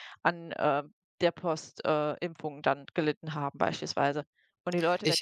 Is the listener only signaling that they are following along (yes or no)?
no